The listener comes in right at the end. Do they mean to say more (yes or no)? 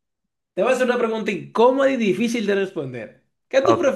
no